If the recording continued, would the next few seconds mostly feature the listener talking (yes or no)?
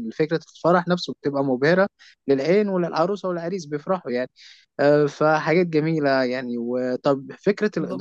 no